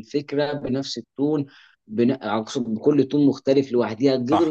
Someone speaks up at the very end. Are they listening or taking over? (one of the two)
listening